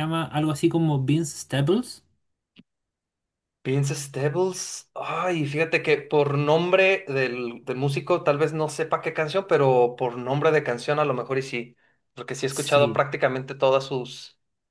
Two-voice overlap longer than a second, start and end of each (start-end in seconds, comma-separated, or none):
none